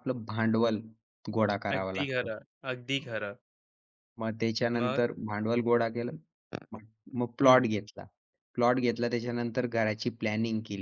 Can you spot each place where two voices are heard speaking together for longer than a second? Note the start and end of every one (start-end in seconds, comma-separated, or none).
none